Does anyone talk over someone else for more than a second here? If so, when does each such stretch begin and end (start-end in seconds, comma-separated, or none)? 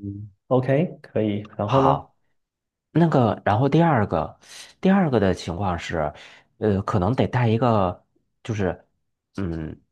none